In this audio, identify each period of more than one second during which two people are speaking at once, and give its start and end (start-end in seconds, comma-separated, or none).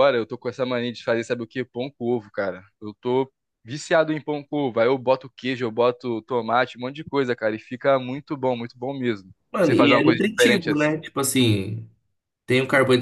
9.5-11.0